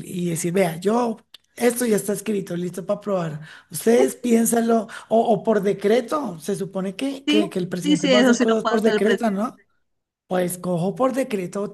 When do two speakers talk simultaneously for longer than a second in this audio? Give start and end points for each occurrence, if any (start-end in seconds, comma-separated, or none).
7.3-9.5